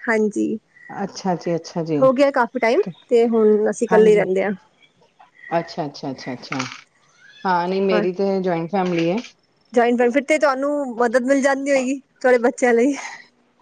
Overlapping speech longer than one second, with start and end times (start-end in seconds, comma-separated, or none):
none